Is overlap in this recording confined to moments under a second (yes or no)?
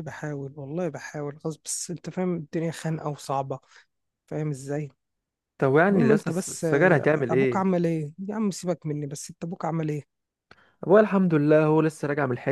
no